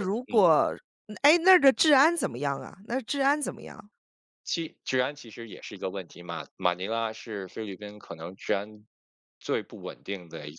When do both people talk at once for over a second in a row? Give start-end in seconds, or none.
none